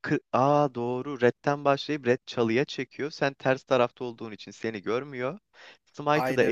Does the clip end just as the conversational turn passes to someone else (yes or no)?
no